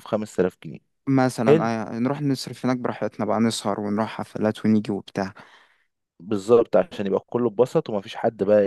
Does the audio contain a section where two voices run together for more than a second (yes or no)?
no